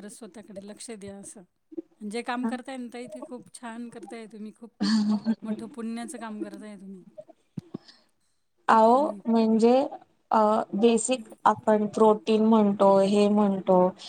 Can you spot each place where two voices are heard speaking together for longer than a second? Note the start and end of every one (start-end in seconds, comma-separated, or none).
none